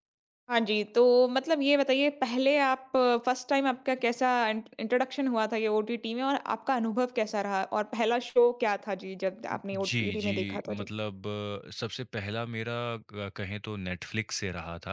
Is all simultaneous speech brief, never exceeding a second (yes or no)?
no